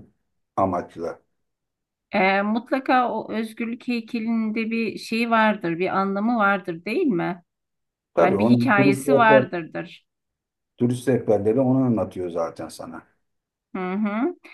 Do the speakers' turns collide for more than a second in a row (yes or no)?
yes